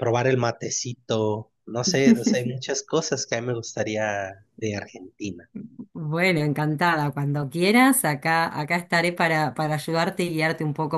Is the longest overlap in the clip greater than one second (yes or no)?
no